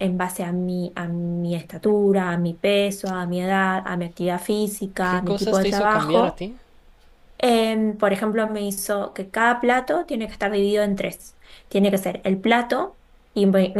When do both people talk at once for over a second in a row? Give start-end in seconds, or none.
5.0-6.4